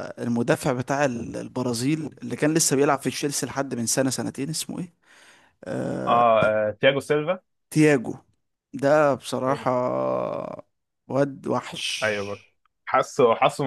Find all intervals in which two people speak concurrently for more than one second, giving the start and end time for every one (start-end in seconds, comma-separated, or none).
none